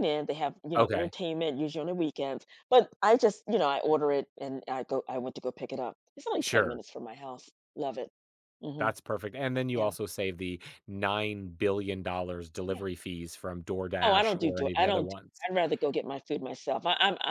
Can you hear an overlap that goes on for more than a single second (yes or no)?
yes